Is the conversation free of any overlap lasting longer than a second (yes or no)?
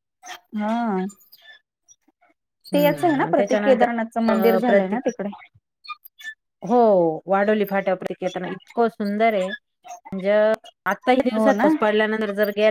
no